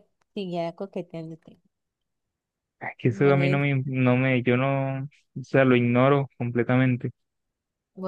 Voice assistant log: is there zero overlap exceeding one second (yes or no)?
yes